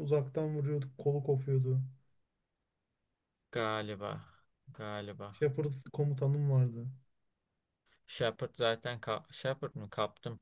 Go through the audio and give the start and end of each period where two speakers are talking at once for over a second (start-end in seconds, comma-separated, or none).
none